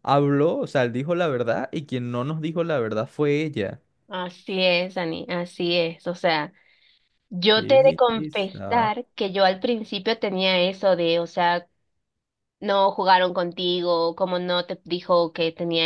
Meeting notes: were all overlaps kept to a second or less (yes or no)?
no